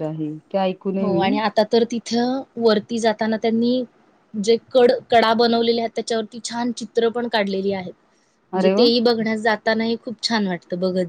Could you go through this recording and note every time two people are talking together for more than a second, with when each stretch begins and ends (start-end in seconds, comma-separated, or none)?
none